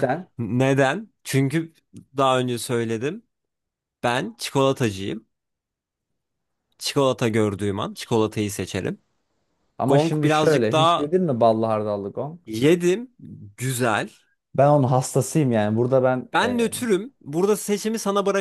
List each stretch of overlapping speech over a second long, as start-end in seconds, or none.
9.9-11.1